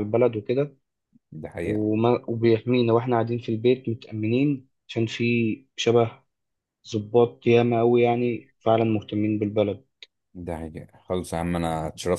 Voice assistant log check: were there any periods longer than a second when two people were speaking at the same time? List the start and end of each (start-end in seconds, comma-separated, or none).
none